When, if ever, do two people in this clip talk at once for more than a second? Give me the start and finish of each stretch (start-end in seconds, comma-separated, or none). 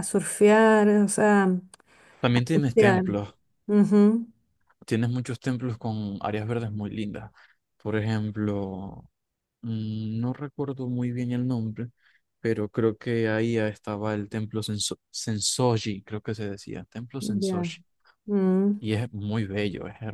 none